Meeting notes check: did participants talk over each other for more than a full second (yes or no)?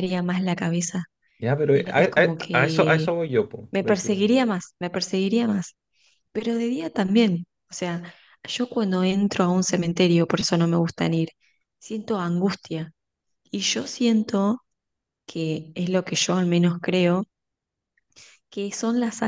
yes